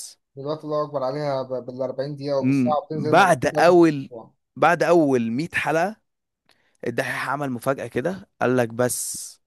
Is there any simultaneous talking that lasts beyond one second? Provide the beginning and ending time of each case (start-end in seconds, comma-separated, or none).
2.4-4.1